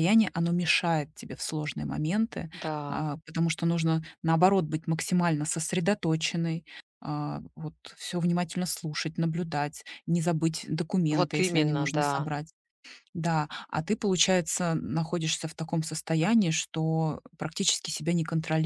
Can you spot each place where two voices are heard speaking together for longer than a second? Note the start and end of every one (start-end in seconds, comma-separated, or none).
11.1-12.3